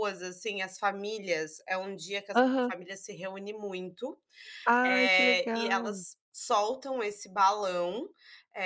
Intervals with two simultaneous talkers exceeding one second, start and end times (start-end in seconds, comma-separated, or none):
4.8-6.0